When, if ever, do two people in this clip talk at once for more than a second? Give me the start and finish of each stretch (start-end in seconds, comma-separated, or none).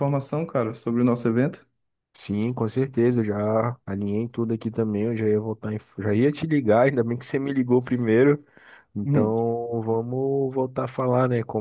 none